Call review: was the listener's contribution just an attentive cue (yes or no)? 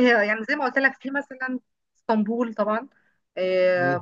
yes